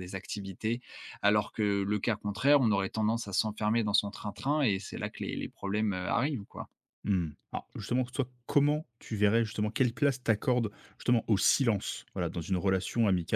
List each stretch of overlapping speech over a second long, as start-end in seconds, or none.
none